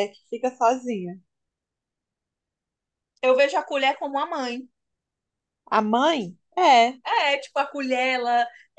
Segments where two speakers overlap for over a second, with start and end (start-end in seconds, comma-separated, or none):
none